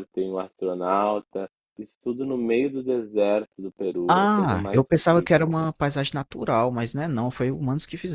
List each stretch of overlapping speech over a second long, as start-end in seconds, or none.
4.1-5.5